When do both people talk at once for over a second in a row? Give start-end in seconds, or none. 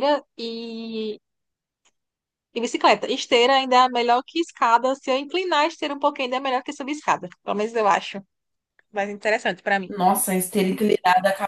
none